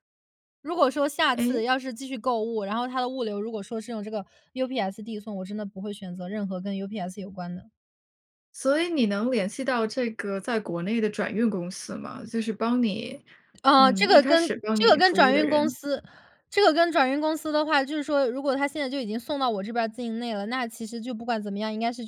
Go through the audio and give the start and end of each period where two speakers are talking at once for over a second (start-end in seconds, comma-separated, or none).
13.8-15.8